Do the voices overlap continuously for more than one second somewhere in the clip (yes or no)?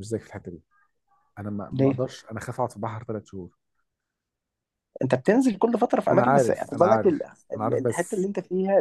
yes